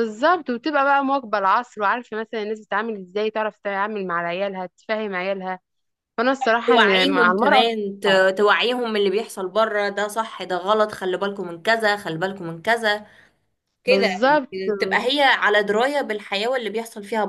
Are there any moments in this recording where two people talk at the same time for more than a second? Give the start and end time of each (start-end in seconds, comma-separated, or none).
6.7-8.2